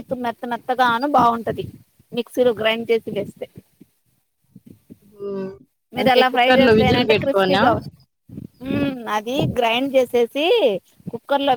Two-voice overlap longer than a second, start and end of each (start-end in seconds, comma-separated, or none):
6.0-7.6